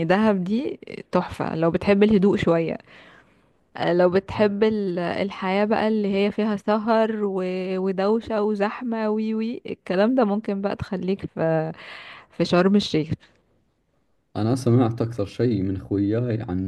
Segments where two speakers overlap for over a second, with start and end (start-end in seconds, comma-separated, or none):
none